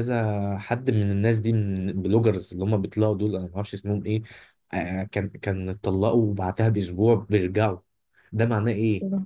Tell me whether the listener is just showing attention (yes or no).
yes